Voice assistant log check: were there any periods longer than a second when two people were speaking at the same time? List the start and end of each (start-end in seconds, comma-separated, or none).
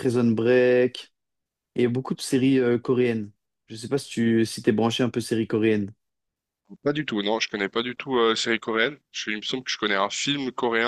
none